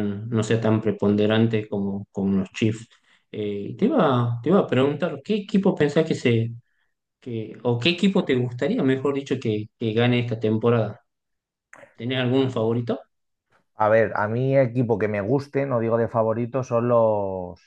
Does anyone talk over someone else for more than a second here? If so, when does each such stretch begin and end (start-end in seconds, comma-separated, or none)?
none